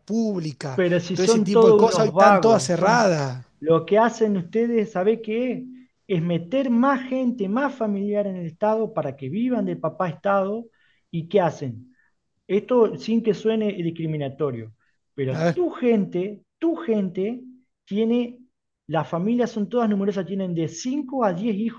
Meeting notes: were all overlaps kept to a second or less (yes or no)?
no